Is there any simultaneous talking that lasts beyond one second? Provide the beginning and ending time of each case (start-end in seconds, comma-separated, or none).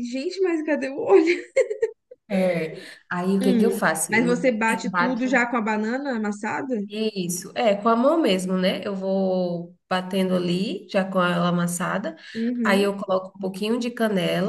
3.4-5.4